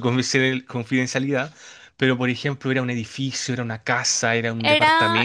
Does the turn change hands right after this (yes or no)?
yes